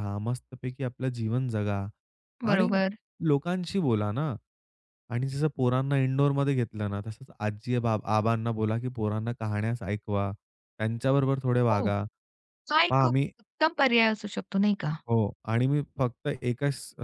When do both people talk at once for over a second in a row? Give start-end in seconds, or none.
none